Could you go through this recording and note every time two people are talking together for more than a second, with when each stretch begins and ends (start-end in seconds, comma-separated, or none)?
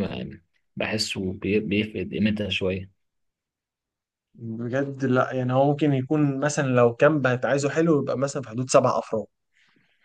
none